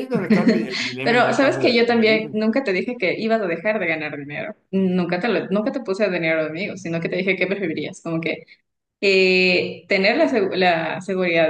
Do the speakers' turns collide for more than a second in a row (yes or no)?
yes